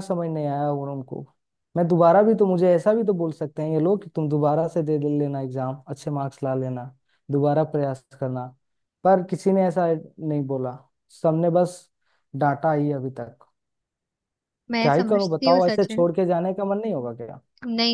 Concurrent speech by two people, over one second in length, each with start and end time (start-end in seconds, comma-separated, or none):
14.8-16.1